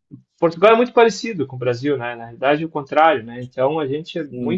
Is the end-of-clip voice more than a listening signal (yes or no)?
no